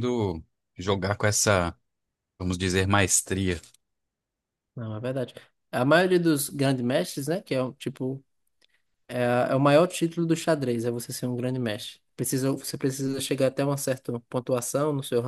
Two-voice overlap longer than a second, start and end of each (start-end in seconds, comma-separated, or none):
none